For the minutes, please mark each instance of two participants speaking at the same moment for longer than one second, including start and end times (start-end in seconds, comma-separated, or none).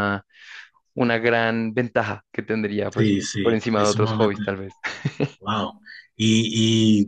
3.0-4.4